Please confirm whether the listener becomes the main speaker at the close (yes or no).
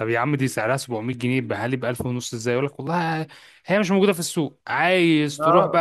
no